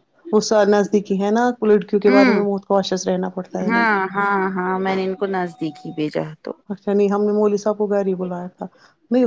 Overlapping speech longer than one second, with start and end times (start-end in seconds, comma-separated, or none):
none